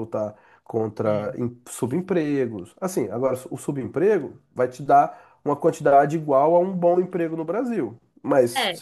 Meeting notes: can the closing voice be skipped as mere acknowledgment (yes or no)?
yes